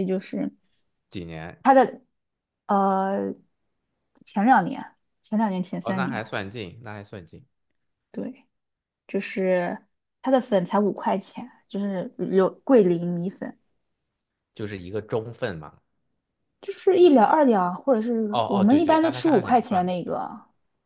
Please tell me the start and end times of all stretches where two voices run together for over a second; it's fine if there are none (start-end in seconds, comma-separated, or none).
18.3-20.2